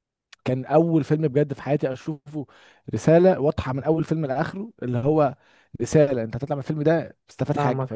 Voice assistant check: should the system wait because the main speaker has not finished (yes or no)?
no